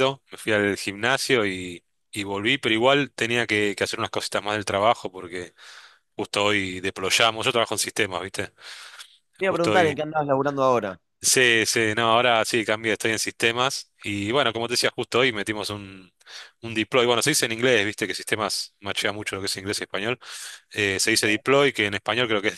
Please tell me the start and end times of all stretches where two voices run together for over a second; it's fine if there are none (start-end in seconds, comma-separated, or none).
none